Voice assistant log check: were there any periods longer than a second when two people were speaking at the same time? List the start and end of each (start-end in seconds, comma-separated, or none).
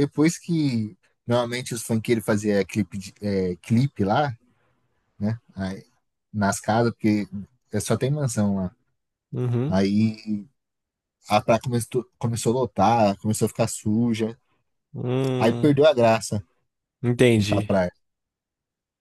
none